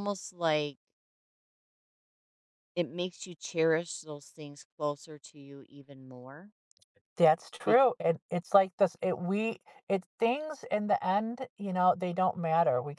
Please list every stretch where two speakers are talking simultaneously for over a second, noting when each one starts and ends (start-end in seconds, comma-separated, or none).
none